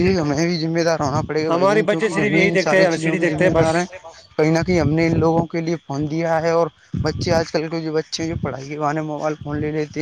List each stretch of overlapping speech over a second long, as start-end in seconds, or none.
1.5-3.7